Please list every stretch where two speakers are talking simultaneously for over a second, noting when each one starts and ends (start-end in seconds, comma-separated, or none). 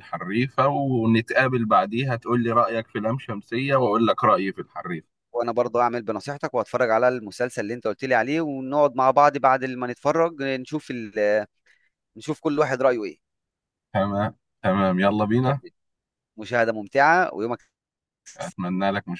none